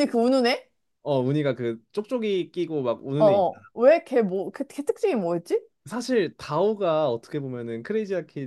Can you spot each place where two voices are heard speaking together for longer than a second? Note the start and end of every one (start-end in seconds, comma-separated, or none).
none